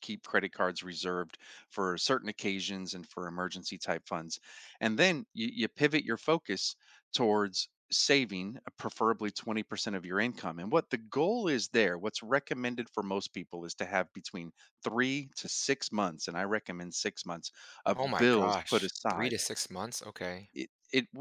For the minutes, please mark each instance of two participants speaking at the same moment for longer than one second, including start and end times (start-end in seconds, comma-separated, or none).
17.9-19.4